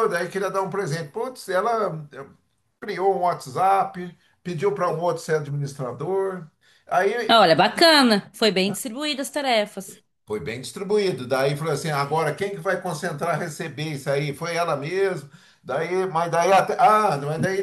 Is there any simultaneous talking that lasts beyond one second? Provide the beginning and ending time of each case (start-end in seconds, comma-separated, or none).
none